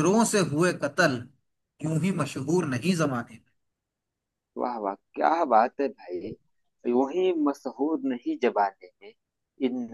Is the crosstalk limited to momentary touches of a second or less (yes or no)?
yes